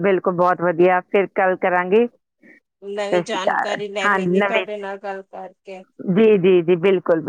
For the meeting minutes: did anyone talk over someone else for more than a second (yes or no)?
yes